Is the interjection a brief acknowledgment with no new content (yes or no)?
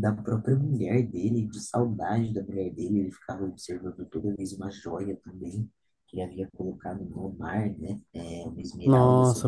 no